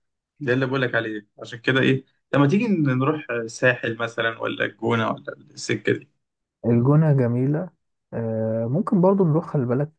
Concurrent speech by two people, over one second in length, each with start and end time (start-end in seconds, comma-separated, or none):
none